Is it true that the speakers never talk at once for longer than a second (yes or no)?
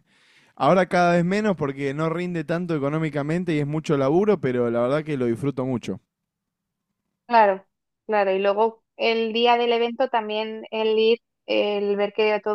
yes